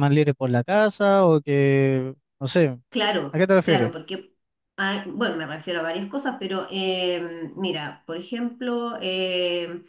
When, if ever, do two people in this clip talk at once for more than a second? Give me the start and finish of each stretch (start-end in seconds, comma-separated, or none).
none